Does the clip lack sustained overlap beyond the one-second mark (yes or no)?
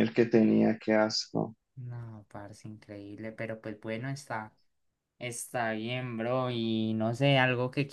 yes